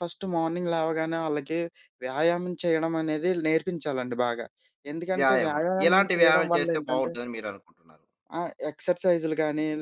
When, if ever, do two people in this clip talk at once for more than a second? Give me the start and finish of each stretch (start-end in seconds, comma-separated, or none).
5.2-7.1